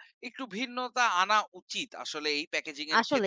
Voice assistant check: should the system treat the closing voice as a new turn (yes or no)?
yes